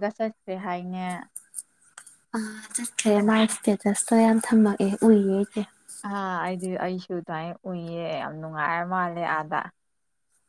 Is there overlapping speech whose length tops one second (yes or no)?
no